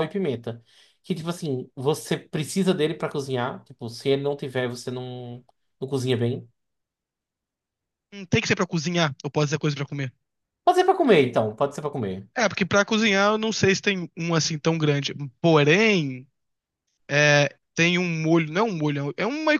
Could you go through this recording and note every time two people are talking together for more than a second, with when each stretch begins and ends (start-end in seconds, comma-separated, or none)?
none